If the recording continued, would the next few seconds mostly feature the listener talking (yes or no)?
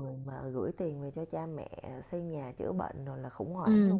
yes